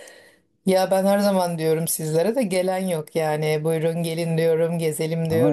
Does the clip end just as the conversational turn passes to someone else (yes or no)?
yes